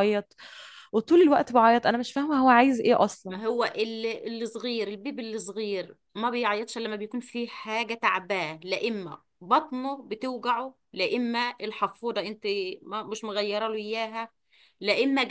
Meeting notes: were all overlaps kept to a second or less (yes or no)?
yes